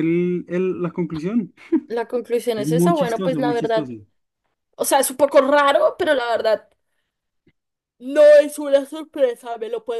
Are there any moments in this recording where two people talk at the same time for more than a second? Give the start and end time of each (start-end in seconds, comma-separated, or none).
2.5-3.9